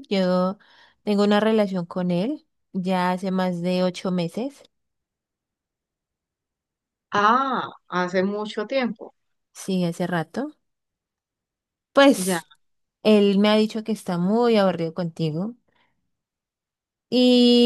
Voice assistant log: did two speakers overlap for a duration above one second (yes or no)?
no